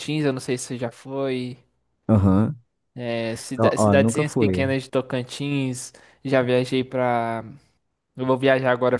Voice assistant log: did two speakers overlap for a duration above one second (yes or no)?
yes